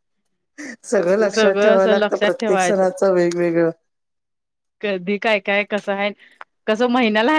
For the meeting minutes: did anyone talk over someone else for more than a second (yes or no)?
yes